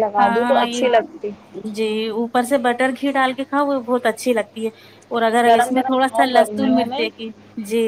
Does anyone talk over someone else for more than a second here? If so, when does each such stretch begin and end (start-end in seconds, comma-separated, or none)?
5.5-7.0